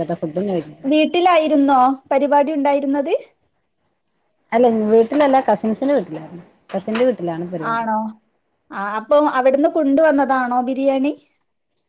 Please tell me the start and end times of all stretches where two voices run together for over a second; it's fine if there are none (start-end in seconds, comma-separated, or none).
none